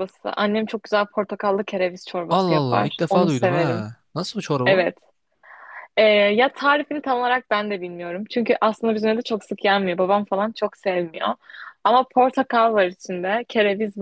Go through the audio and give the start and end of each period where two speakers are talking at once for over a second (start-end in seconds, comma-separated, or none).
2.3-3.9